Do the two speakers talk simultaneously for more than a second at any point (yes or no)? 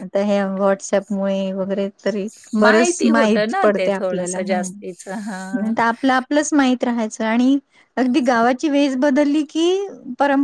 yes